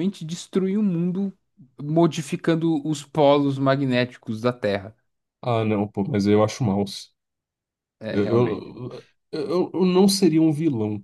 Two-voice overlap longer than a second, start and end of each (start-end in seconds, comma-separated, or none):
none